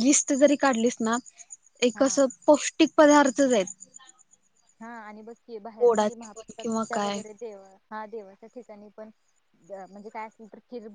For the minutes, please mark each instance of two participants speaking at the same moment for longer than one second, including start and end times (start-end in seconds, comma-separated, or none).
5.8-7.2